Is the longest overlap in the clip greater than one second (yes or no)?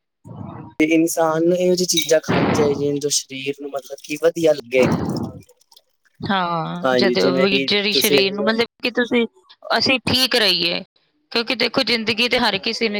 yes